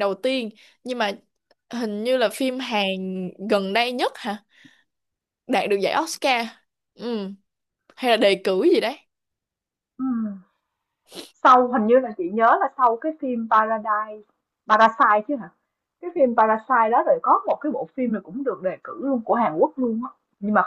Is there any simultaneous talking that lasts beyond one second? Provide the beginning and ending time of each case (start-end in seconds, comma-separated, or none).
none